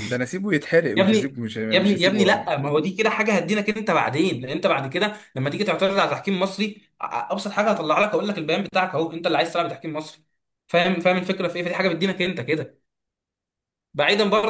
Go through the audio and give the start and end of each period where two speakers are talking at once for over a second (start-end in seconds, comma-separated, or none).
0.9-2.5